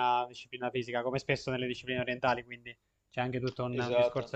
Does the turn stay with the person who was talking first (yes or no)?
no